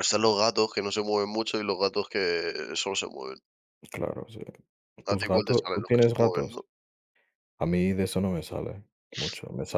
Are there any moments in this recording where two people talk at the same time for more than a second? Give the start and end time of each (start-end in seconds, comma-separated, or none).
5.1-6.6